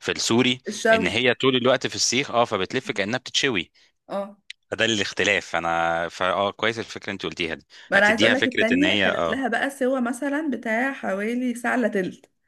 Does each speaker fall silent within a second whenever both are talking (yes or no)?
no